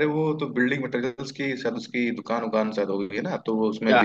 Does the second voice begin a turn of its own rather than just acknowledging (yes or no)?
yes